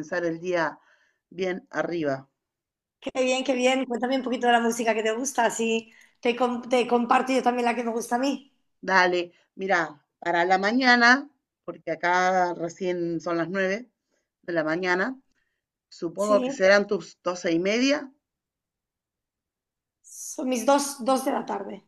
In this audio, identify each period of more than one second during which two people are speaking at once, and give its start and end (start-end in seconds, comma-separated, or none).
none